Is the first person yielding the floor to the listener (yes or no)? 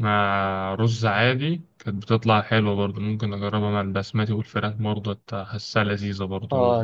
yes